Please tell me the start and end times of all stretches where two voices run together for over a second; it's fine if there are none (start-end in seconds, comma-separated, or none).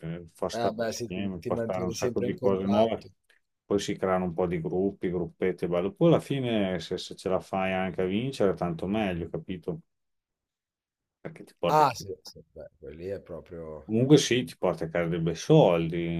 0.5-3.1